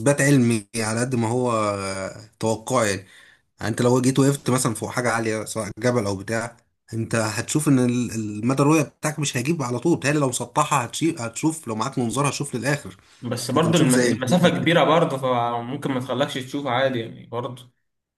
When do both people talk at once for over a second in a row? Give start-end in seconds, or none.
13.6-14.8